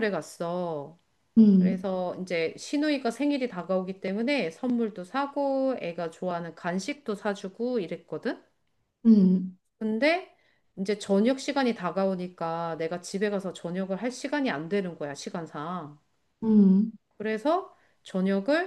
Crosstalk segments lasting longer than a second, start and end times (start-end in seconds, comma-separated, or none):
none